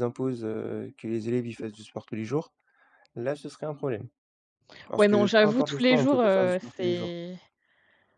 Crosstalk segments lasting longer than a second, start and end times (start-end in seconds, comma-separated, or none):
5.0-7.1